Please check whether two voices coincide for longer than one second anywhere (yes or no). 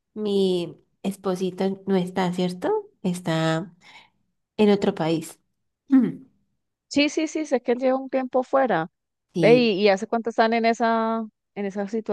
no